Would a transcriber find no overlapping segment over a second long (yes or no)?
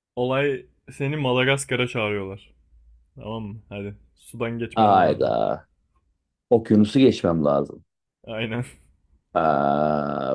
yes